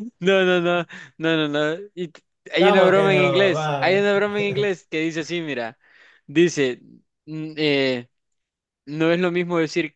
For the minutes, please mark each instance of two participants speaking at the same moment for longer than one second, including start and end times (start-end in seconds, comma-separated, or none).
2.6-4.1